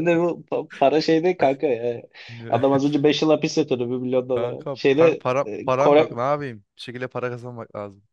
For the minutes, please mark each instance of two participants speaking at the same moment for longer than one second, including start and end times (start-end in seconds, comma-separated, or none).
4.3-6.2